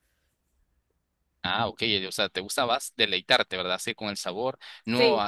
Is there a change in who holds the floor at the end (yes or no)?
no